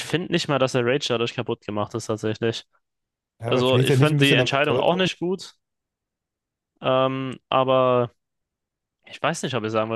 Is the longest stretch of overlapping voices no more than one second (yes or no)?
no